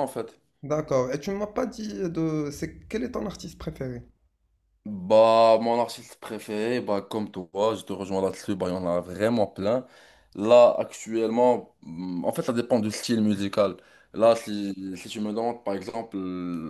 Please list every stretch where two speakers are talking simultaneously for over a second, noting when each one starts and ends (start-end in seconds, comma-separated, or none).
none